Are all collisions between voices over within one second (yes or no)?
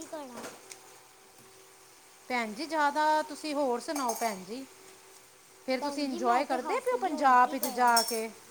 no